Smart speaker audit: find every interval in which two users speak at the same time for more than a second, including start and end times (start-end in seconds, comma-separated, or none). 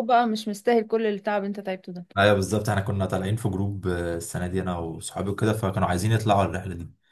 none